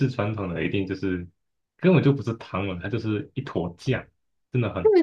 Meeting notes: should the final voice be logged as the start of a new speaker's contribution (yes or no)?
yes